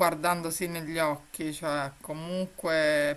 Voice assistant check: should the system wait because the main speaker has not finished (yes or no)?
yes